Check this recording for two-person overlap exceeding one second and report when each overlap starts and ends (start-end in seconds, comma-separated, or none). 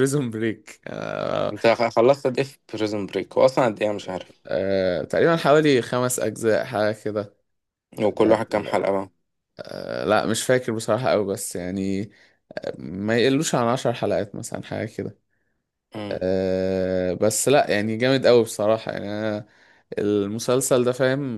none